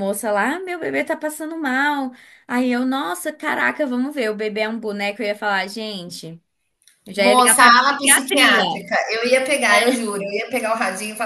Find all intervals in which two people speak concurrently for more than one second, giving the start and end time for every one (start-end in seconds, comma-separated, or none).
7.2-8.8